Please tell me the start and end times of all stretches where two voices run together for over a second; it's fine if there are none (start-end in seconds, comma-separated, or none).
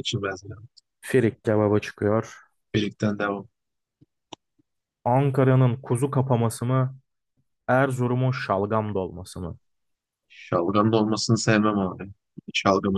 none